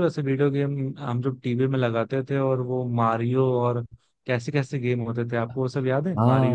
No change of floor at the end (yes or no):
no